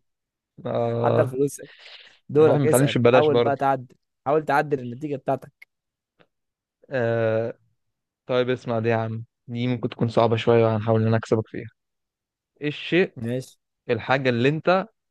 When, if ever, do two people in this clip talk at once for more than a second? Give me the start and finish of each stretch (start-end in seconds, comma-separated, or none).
2.4-3.5